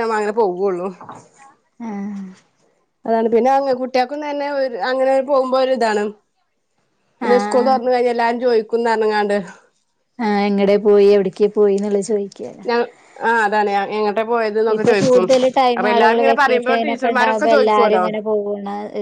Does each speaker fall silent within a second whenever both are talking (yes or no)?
no